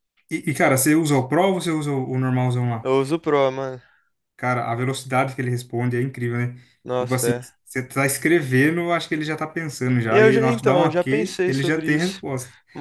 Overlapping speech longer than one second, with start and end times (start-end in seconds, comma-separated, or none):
10.1-12.2